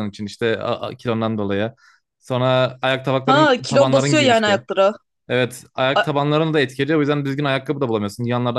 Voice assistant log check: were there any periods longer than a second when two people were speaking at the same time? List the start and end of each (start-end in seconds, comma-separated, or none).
3.3-4.6